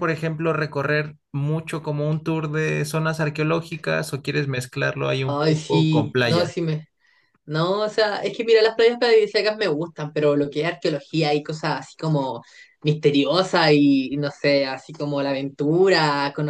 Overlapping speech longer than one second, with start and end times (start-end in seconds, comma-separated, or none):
5.3-6.5